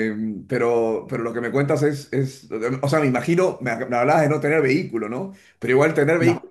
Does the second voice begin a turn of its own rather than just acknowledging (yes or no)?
no